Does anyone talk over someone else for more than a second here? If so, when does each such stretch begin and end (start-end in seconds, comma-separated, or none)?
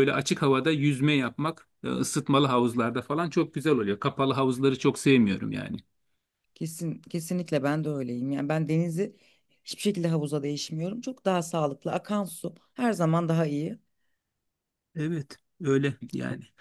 none